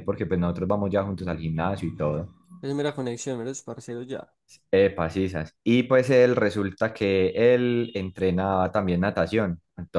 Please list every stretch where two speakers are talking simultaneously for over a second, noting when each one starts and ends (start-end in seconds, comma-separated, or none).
none